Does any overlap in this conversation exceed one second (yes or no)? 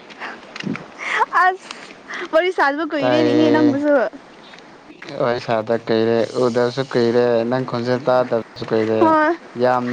no